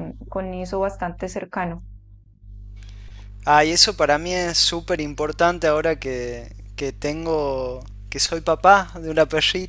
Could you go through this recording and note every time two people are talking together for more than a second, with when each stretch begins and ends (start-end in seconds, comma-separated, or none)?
none